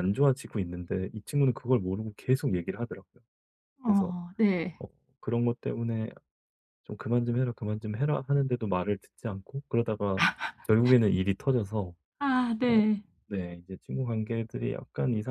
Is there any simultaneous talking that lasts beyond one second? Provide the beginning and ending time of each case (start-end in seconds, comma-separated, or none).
none